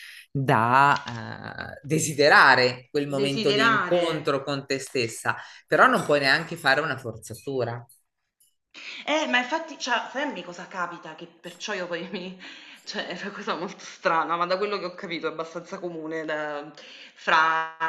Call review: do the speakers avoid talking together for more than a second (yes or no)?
no